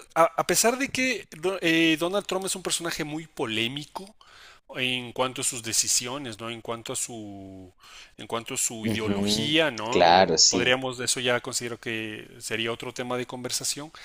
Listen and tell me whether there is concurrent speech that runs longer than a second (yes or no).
yes